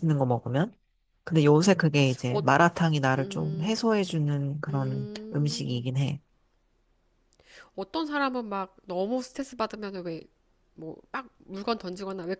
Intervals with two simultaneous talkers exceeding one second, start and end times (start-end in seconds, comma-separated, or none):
4.7-5.9